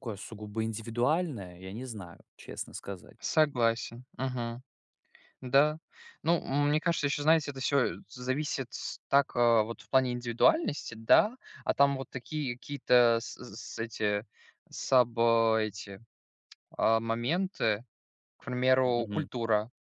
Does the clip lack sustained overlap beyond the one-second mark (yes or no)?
yes